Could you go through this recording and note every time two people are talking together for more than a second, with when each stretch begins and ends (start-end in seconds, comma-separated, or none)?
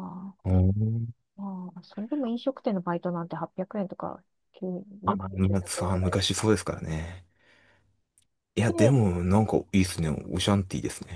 5.0-6.6